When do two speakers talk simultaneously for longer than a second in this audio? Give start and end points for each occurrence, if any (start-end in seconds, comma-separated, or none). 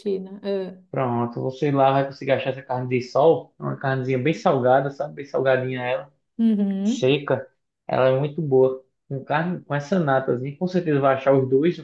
none